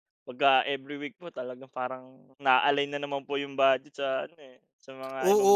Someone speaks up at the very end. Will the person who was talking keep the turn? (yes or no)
no